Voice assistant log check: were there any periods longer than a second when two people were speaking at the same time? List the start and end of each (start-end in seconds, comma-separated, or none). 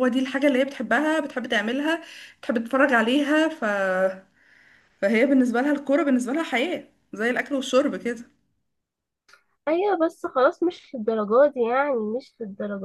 none